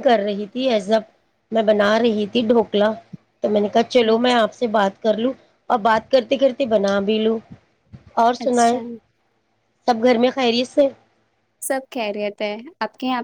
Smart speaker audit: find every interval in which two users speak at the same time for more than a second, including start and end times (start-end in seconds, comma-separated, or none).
none